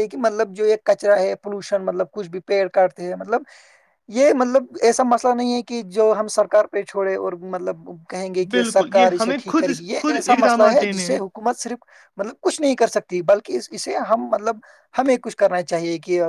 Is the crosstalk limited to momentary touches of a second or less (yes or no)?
no